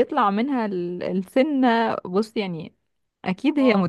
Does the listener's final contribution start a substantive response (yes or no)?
no